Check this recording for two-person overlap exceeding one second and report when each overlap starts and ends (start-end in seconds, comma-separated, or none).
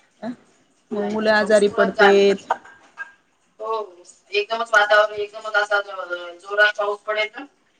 0.9-2.2